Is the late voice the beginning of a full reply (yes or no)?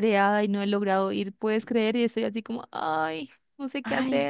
yes